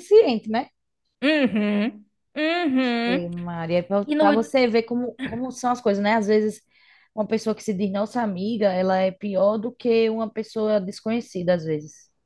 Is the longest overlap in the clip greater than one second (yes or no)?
no